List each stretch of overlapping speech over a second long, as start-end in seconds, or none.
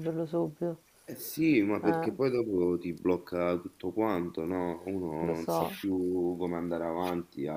none